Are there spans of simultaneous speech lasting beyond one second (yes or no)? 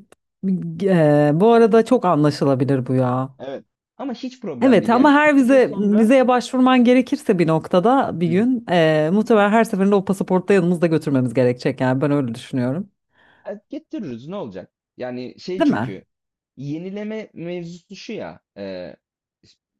yes